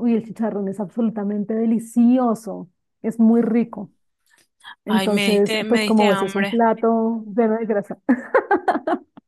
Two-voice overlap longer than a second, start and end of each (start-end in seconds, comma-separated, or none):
4.8-6.6